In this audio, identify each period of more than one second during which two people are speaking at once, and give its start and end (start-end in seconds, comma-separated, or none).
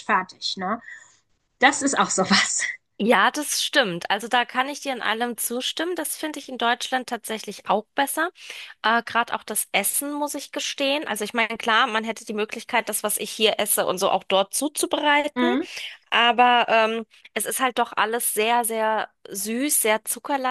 none